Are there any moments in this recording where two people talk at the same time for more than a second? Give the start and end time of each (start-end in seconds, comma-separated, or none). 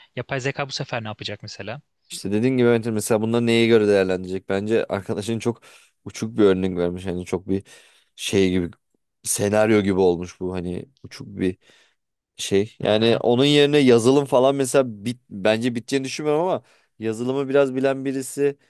none